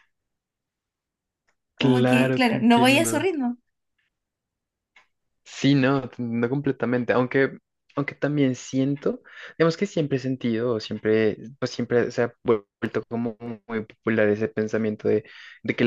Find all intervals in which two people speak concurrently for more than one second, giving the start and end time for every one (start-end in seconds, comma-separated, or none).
1.8-3.3